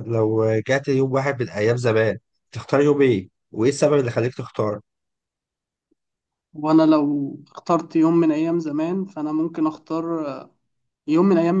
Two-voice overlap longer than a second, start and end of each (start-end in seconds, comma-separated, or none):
none